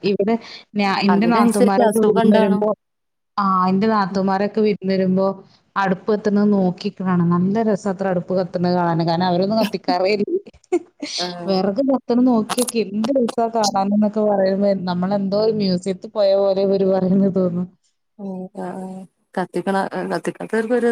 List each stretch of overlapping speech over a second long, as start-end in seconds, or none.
1.1-2.6